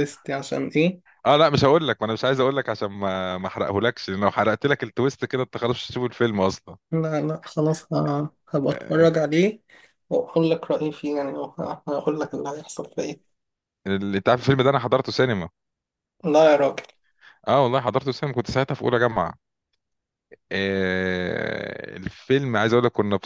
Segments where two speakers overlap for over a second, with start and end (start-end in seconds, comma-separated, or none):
none